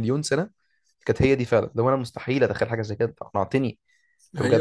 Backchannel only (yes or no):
yes